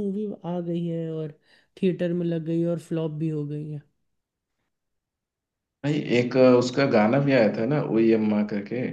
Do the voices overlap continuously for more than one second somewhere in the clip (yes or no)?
no